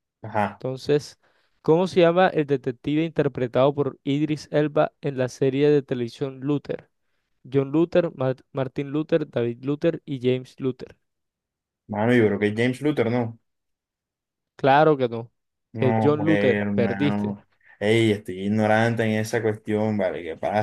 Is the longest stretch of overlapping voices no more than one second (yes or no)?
no